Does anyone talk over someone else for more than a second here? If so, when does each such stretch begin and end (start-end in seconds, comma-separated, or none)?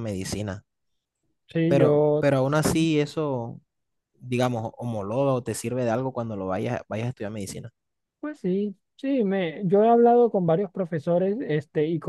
none